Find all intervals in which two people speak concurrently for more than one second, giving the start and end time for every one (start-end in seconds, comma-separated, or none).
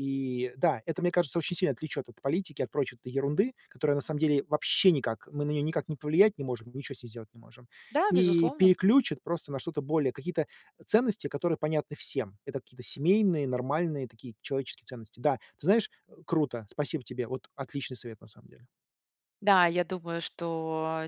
none